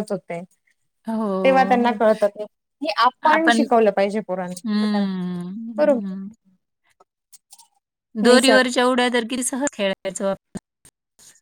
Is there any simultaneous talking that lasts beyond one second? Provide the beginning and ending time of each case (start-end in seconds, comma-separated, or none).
none